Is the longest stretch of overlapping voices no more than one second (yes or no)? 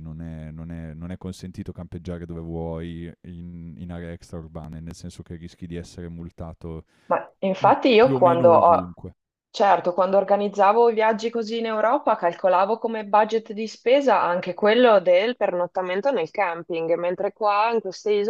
no